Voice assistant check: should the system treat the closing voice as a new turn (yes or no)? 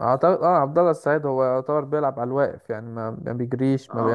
yes